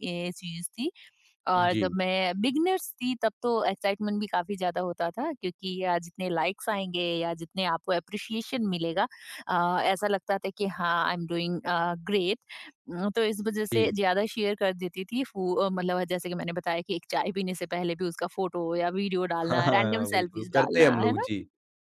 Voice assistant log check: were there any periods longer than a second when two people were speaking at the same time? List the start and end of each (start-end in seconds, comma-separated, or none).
19.4-21.3